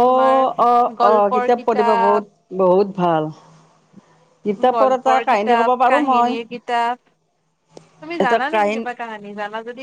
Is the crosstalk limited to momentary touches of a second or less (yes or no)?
no